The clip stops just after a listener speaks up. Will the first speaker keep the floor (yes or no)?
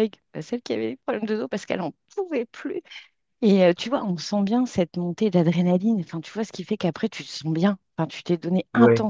yes